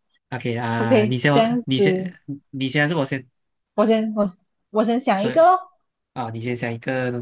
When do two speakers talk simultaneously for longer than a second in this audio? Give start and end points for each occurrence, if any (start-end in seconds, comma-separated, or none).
0.8-2.1